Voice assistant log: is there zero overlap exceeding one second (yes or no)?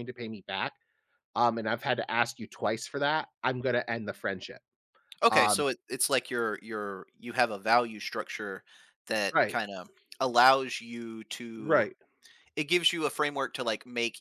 yes